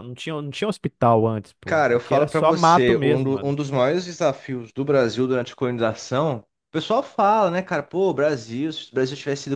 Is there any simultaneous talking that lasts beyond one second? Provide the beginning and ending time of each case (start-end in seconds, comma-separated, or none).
1.6-3.5